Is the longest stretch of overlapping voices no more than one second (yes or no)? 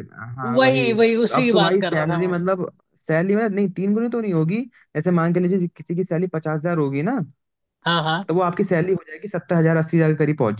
no